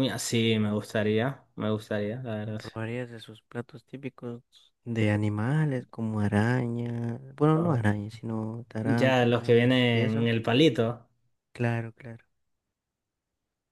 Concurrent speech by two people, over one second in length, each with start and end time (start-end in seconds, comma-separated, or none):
8.8-10.3